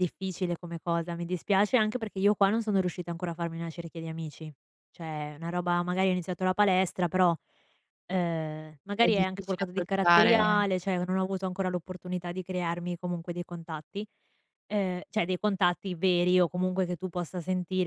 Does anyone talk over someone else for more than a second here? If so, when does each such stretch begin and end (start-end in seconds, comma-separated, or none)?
9.0-10.7